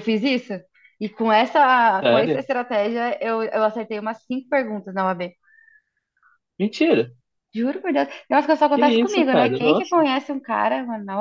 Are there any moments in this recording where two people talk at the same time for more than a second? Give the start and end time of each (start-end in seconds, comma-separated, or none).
8.6-10.0